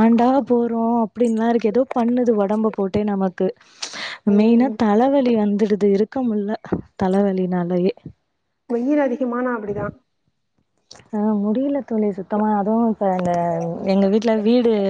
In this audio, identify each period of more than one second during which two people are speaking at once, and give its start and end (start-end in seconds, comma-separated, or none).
none